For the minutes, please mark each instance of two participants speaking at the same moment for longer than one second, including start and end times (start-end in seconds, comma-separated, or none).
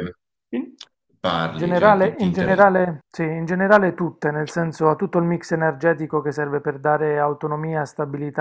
1.4-2.7